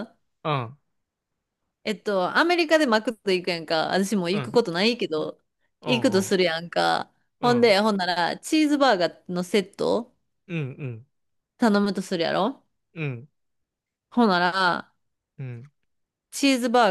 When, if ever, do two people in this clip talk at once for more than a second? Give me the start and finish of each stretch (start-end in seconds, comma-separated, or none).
none